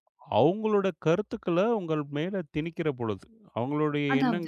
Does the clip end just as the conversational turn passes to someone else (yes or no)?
no